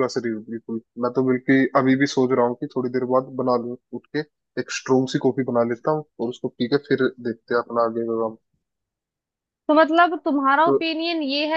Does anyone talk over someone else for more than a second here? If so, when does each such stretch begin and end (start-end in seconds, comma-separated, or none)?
none